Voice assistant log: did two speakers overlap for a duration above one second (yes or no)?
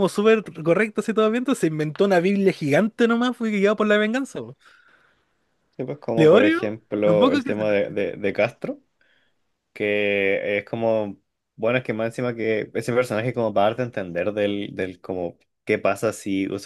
yes